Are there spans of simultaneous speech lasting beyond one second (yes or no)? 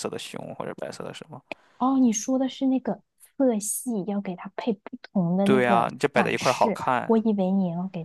yes